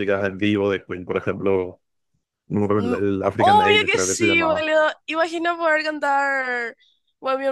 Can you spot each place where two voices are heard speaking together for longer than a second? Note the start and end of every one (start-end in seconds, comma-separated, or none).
2.8-4.7